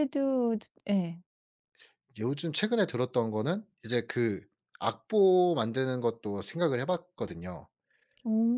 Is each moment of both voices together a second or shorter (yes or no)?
yes